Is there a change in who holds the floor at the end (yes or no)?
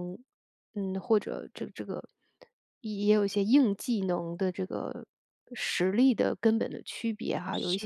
no